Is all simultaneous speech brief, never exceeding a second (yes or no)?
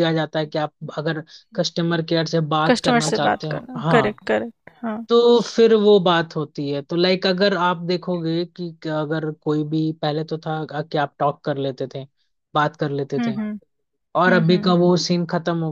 no